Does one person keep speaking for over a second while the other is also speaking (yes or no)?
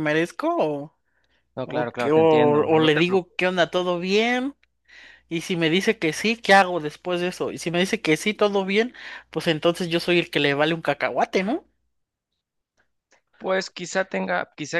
yes